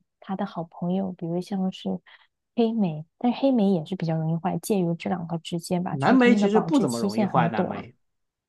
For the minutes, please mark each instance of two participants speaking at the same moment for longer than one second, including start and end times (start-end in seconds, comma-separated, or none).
5.9-7.8